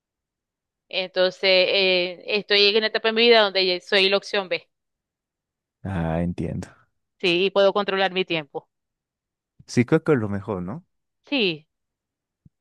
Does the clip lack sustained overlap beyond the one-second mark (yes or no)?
yes